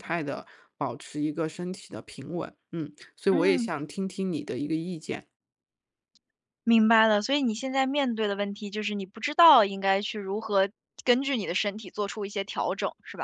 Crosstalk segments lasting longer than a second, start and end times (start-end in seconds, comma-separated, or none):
none